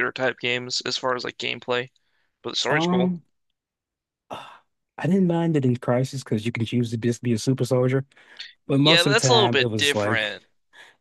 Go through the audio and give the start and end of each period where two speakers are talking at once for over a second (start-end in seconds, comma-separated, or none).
8.7-10.3